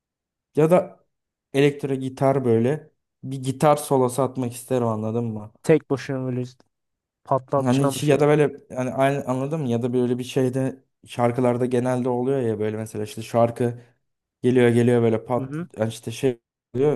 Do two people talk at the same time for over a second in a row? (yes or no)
no